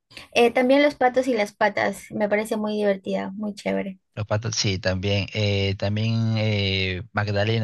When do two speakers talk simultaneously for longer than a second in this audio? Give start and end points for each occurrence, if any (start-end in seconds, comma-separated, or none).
none